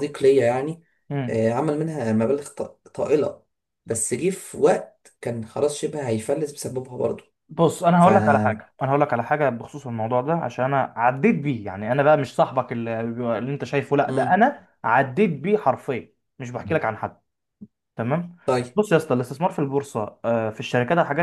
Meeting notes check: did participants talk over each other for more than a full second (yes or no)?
no